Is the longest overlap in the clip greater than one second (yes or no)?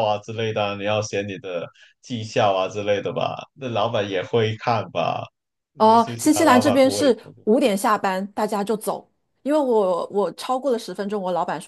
yes